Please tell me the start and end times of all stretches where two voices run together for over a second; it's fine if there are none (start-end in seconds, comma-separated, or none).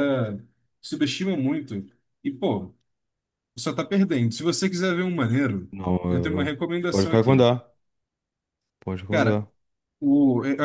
6.1-7.5